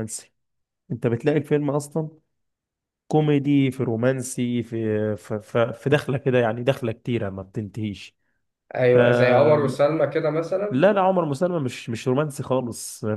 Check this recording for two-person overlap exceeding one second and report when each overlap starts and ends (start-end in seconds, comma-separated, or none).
none